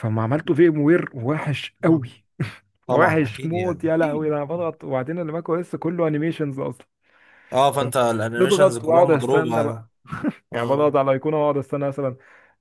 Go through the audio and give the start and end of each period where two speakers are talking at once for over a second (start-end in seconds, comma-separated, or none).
2.9-4.7, 8.4-9.7